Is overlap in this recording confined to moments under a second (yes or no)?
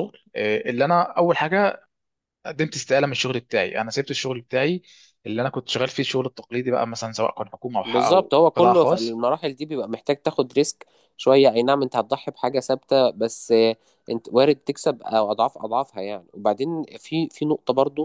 no